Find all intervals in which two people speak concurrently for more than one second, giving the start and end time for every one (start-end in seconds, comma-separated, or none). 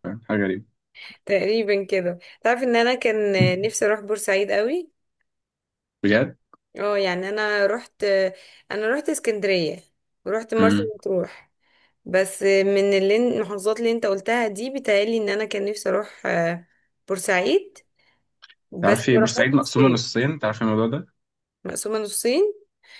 18.8-20.0